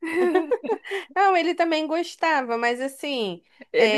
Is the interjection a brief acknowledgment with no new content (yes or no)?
no